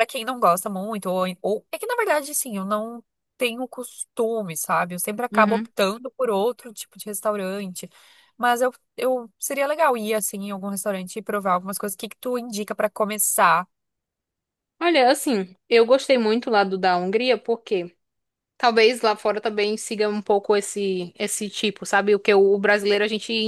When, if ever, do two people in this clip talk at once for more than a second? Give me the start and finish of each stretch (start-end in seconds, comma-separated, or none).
none